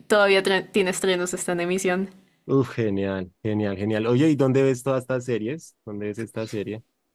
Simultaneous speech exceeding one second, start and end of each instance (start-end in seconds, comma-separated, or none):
none